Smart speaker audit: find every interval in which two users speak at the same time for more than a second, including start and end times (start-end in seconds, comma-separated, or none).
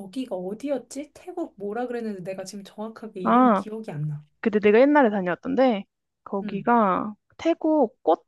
none